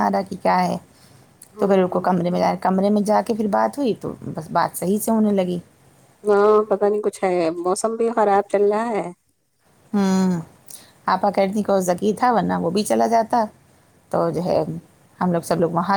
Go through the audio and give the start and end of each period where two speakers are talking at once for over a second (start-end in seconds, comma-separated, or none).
none